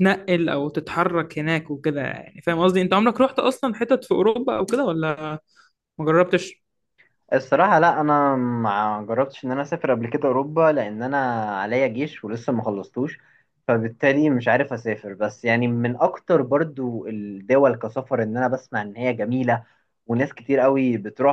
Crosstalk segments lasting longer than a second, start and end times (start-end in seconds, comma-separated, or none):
none